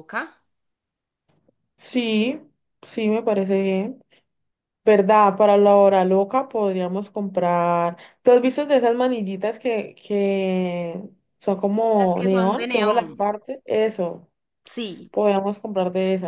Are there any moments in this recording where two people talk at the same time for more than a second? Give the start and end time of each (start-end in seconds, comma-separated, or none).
12.0-13.3